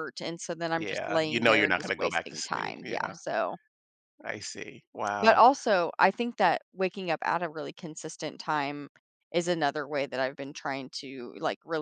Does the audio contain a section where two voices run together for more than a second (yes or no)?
yes